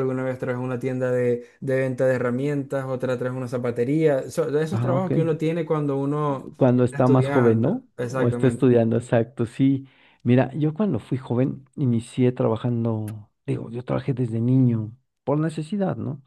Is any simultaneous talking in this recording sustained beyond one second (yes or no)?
yes